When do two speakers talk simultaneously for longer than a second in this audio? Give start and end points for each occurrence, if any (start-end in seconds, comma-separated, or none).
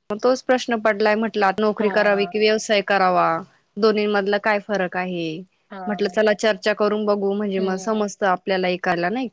none